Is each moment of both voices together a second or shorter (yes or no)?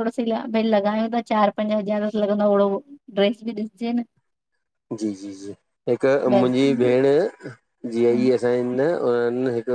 yes